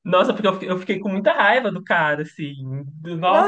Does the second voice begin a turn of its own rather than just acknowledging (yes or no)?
yes